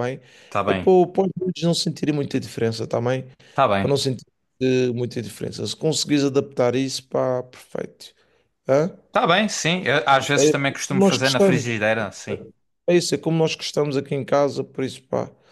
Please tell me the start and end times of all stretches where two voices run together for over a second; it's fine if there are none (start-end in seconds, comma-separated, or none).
10.4-11.7